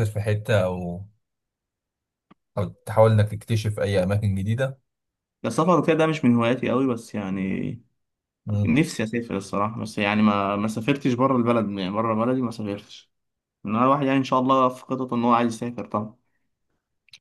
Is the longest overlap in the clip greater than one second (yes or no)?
no